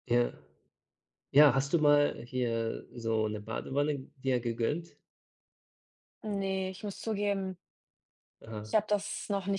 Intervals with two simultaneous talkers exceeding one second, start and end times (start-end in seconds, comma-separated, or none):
none